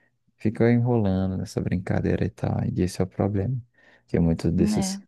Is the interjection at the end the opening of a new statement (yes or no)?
no